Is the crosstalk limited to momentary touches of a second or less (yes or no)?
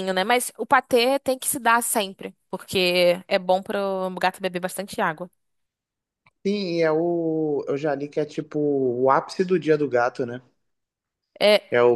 yes